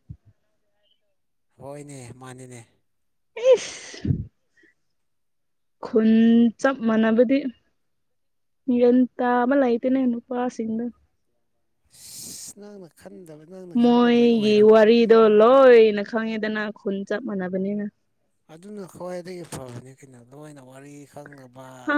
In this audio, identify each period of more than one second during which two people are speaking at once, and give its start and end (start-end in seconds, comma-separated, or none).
none